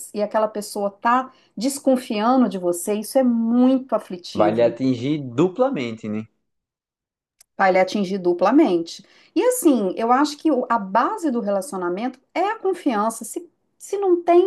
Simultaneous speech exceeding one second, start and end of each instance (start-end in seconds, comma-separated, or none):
none